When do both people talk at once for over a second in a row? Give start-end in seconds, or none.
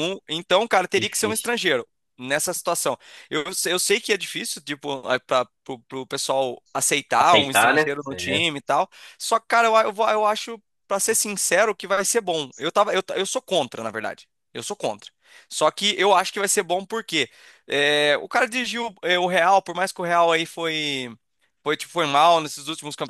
7.2-8.4